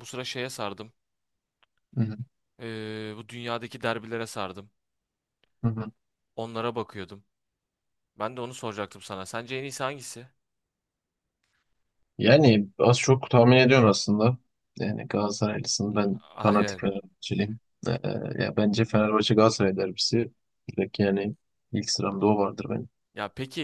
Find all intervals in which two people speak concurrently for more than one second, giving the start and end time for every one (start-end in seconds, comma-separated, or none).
none